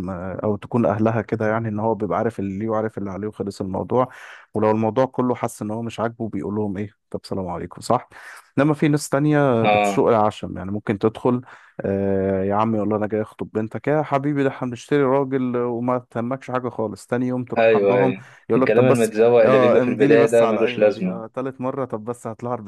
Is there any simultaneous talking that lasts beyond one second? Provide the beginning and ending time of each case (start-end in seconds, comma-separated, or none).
17.6-21.2